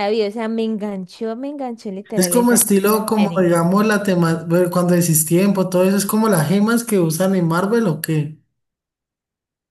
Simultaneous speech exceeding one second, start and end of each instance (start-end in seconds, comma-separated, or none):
2.1-3.5